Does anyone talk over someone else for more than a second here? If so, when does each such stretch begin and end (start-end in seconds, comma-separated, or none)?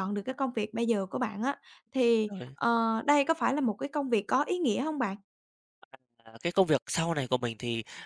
none